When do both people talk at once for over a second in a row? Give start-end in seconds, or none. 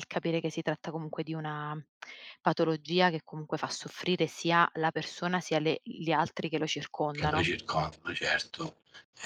none